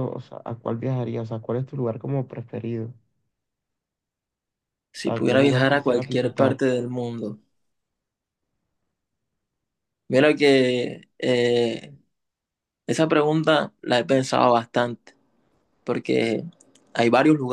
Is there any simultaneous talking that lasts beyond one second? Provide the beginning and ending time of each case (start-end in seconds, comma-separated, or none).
5.0-6.6